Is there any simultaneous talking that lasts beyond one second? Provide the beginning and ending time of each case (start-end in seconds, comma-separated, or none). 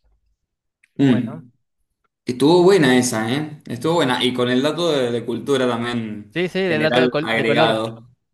6.3-7.8